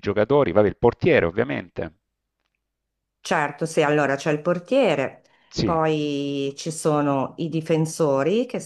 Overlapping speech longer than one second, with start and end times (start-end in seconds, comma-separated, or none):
none